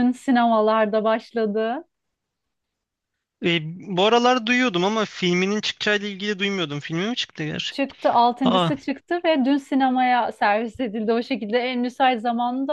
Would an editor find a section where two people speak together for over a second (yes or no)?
no